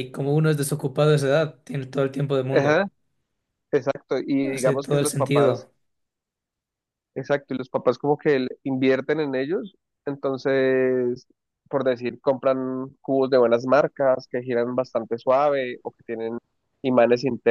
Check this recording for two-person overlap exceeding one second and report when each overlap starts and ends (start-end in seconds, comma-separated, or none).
4.4-5.7